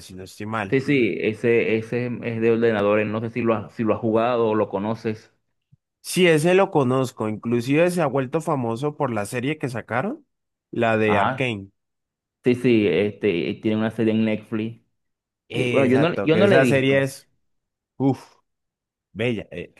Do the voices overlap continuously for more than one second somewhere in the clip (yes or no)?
yes